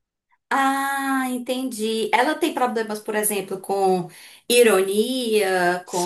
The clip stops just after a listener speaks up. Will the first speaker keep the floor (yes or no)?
no